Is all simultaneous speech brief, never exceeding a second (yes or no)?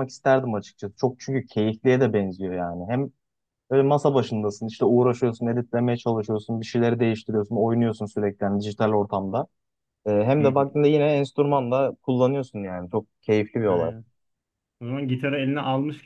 yes